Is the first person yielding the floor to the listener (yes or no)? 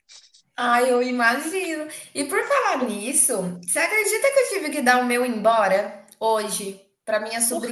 no